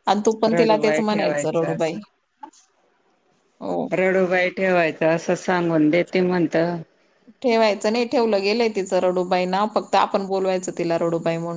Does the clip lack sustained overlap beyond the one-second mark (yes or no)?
no